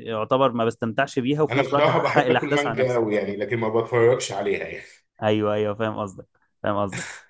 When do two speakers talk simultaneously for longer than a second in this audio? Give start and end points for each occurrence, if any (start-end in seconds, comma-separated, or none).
1.5-3.0